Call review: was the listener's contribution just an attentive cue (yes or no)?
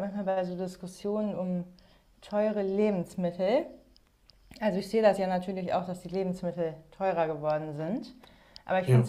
yes